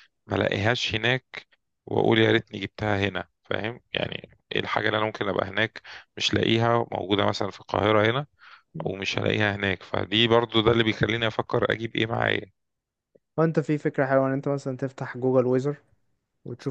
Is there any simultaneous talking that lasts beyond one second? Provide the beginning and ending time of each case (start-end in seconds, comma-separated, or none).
none